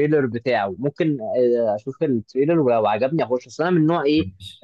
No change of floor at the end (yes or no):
yes